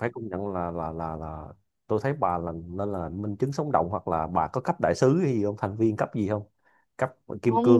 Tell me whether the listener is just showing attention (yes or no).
no